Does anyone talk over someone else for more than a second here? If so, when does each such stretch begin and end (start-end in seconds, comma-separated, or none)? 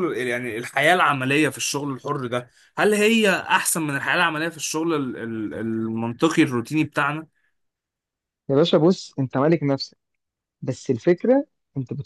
none